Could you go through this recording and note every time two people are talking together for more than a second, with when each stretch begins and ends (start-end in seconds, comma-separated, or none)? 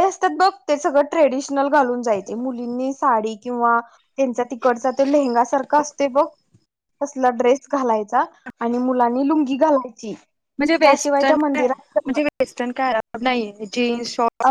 10.8-12.2